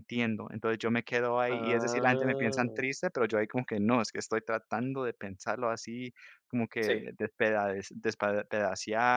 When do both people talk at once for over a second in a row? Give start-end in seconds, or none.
1.5-2.9